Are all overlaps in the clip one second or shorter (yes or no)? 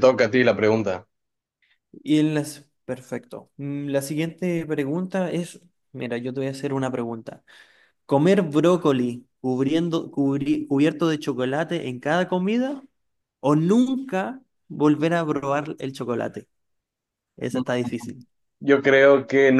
yes